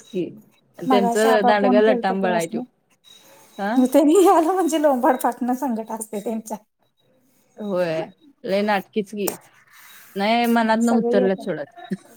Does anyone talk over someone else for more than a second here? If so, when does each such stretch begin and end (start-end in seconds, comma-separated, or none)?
0.9-2.1